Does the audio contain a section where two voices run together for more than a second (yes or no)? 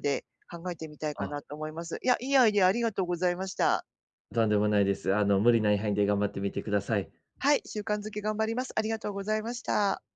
no